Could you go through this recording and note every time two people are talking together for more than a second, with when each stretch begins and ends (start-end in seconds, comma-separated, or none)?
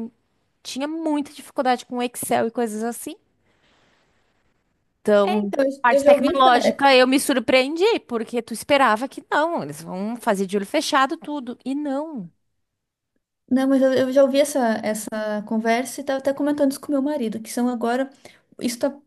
5.2-6.8